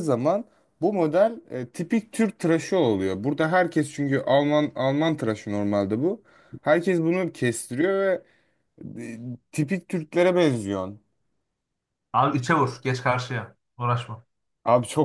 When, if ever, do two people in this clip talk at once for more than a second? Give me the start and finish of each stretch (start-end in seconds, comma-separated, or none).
none